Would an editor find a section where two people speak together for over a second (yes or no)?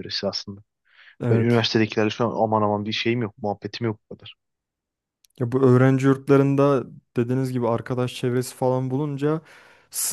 no